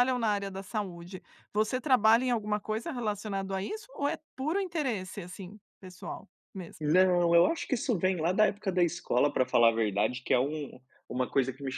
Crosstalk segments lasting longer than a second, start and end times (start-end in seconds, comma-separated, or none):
none